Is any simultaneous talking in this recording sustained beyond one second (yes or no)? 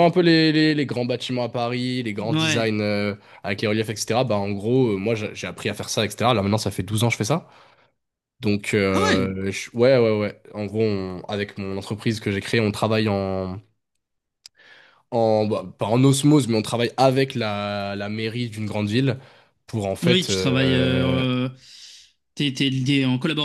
yes